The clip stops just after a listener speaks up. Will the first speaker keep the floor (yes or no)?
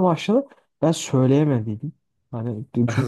yes